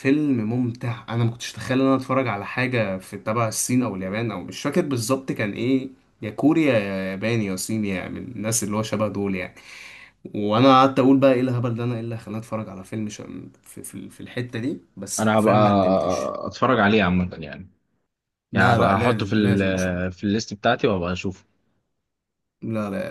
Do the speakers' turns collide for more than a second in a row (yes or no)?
yes